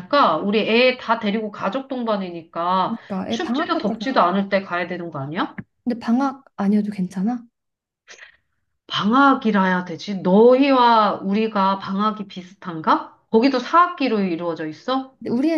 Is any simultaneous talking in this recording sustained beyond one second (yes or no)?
yes